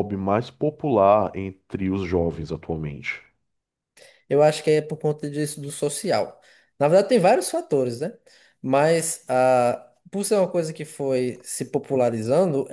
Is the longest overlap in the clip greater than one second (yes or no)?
no